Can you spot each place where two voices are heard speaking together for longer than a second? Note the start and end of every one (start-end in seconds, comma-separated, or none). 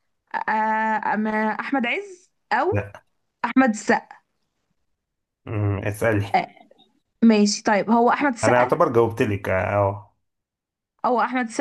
none